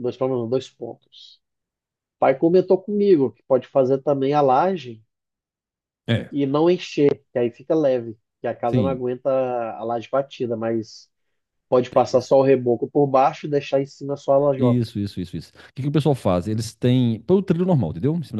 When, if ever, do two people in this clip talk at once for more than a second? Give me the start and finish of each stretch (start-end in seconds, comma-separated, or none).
none